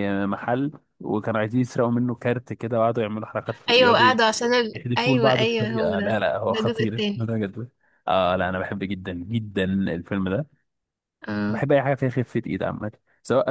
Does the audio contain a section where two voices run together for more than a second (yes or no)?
yes